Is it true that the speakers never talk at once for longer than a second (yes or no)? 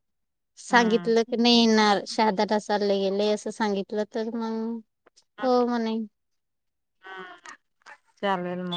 no